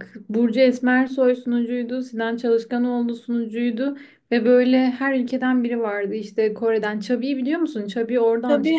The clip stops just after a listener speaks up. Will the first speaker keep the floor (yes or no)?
no